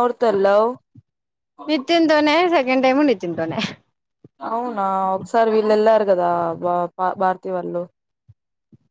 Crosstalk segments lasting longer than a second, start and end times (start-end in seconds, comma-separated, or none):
none